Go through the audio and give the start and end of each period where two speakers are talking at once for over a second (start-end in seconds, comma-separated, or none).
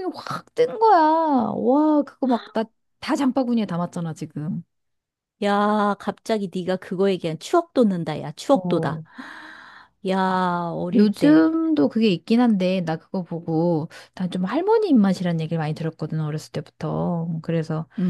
none